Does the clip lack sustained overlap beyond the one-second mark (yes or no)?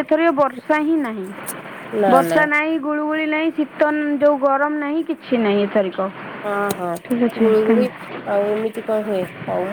yes